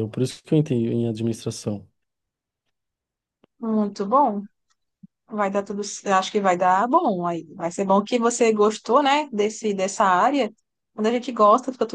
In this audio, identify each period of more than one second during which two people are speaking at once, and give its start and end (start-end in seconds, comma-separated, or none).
none